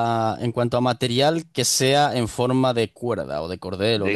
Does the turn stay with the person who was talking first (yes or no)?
no